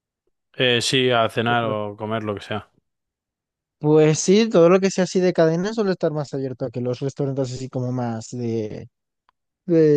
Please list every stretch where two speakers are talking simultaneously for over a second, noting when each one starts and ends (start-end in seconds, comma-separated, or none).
none